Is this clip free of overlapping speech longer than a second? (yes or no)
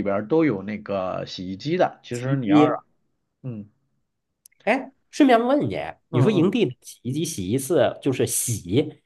yes